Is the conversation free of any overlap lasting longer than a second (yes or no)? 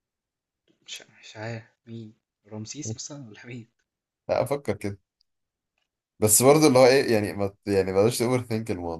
yes